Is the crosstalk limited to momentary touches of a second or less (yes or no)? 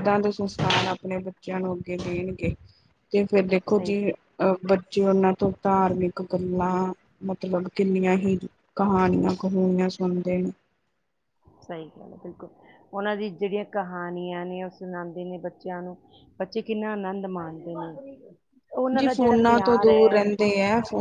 no